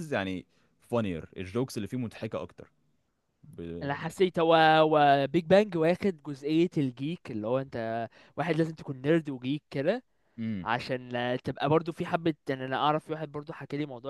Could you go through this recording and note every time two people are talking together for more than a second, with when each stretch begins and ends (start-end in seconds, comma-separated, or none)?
none